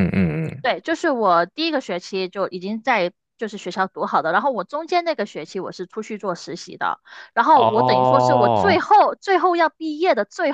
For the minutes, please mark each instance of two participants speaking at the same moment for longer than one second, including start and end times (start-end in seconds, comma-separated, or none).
7.5-8.8